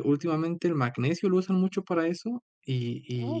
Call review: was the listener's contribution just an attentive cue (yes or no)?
yes